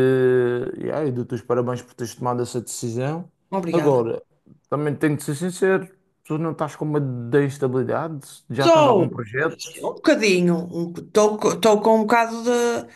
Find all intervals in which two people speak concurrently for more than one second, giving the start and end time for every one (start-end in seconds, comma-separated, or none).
none